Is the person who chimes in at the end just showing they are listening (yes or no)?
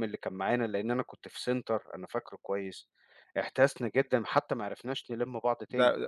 no